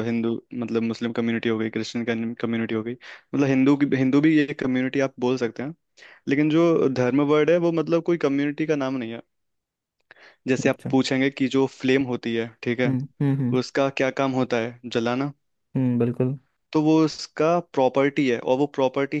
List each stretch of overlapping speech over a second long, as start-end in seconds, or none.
none